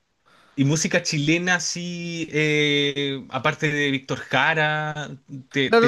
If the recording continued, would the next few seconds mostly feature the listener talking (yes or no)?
yes